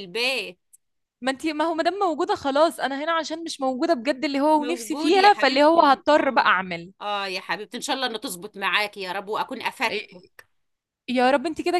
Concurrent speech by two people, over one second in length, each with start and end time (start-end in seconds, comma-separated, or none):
4.5-6.5